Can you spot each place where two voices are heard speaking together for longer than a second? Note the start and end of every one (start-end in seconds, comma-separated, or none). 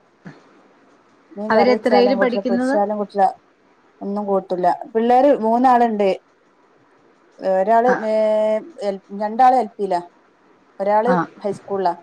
1.5-2.8